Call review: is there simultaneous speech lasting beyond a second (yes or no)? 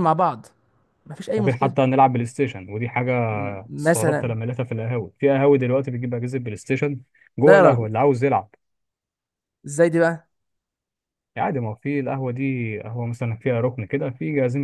no